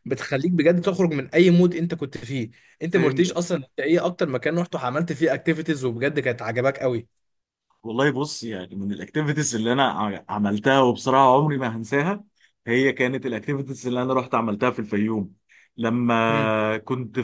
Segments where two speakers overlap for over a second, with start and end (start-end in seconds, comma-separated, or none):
none